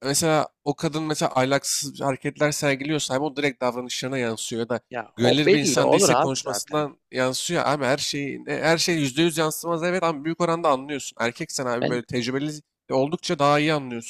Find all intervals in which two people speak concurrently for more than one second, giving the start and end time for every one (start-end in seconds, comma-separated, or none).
5.2-6.9